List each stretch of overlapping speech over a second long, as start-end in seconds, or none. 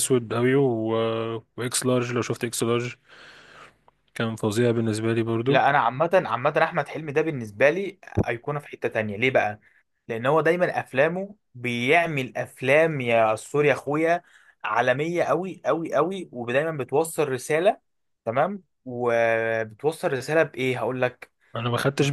none